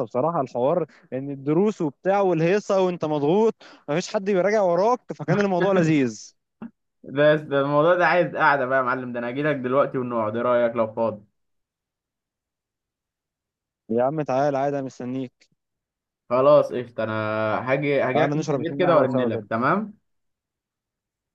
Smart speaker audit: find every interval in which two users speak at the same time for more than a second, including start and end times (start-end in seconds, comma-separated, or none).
18.1-19.5